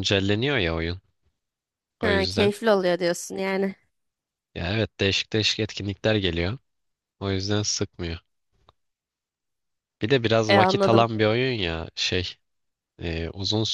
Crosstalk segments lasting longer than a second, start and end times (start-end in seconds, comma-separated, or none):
none